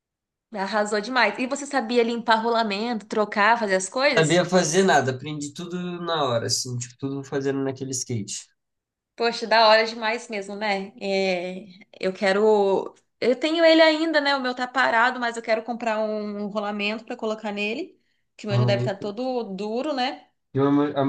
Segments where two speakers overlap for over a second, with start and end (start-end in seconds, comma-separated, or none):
none